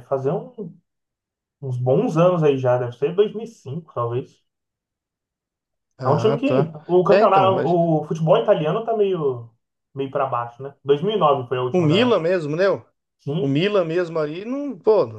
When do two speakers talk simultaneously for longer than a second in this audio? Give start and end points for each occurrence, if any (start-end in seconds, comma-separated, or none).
6.0-7.8